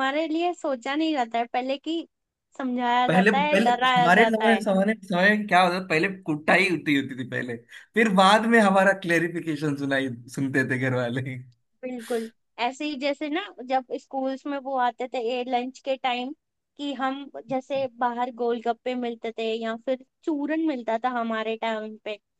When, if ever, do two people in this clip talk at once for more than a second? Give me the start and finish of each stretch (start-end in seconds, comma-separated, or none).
3.1-4.6